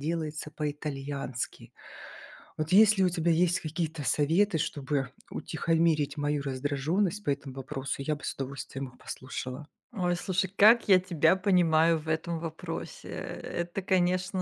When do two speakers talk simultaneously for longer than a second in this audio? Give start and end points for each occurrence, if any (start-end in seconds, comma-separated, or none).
none